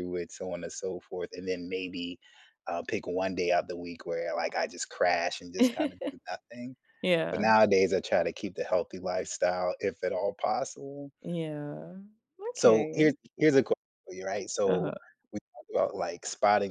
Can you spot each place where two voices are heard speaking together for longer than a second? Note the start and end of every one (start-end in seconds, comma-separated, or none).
none